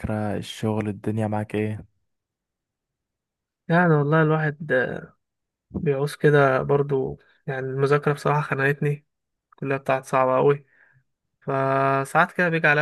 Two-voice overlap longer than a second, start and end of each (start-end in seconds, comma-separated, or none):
none